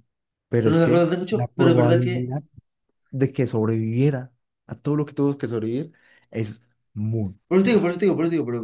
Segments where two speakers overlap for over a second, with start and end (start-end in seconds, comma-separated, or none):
0.6-2.3